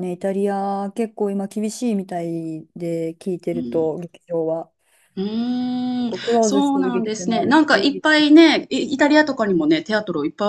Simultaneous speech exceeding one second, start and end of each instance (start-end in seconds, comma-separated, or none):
6.0-8.0